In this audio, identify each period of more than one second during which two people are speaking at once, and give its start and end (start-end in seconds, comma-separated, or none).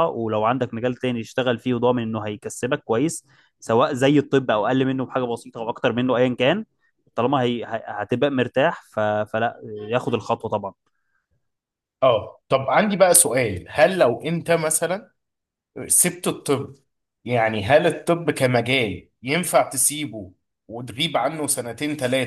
none